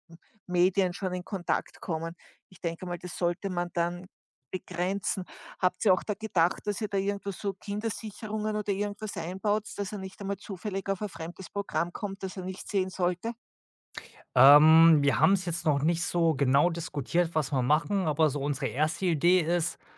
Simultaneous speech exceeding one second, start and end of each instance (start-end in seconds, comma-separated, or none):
none